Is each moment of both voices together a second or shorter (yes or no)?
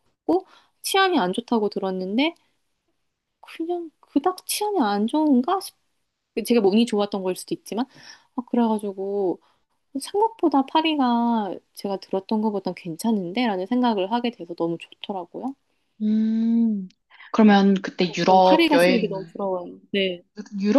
no